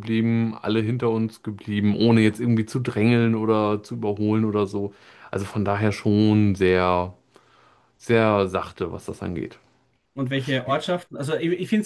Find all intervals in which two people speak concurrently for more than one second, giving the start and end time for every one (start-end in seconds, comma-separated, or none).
none